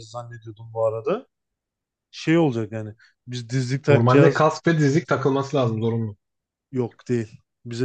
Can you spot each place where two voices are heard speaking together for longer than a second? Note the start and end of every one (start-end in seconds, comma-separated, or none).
none